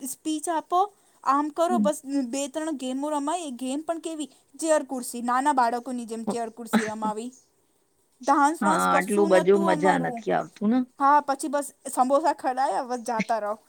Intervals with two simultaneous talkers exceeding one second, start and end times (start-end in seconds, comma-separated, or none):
8.6-10.2